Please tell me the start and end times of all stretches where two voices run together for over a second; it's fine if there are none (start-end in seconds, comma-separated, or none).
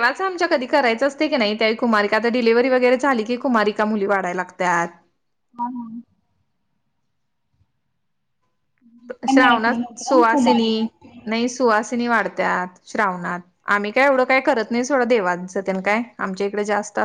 9.3-10.7